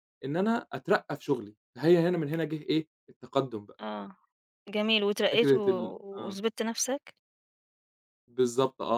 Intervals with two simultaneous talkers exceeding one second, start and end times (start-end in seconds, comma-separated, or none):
none